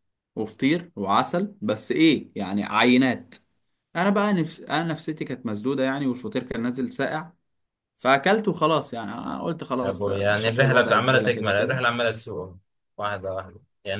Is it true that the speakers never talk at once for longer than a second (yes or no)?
no